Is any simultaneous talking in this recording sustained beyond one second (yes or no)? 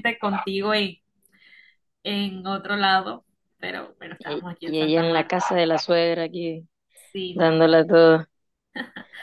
yes